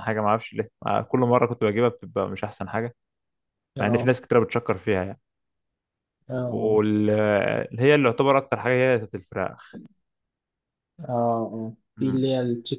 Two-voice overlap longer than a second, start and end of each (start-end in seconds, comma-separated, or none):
none